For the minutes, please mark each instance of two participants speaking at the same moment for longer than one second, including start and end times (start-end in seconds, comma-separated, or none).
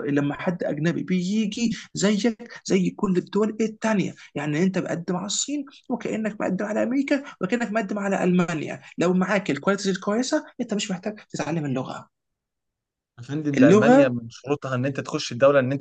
none